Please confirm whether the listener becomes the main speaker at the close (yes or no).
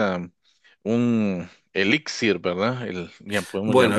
yes